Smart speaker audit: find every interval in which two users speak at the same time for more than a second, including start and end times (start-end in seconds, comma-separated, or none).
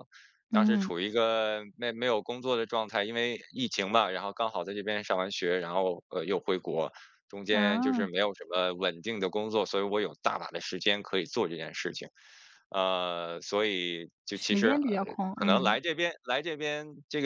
14.3-15.8